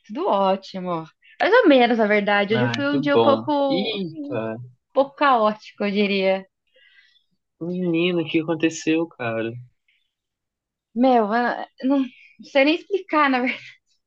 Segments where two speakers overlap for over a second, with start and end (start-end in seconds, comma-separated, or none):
2.5-4.3